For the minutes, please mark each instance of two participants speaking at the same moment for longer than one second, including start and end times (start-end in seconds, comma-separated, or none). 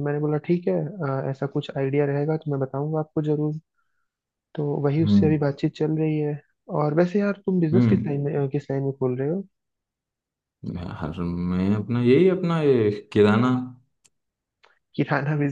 none